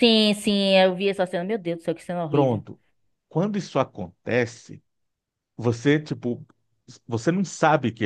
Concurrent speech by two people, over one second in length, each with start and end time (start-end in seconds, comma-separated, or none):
none